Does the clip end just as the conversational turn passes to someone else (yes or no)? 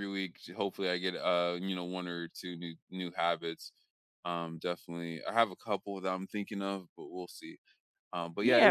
yes